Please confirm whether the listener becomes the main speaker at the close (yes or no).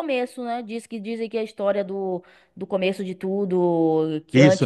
yes